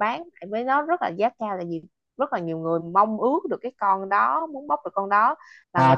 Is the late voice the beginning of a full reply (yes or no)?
yes